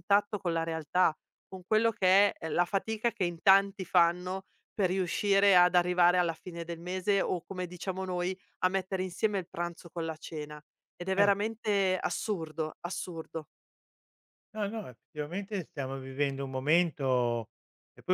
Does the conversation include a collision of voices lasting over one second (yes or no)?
no